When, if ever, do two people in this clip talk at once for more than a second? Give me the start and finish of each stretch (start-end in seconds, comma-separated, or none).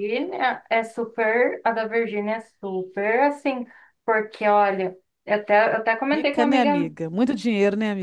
none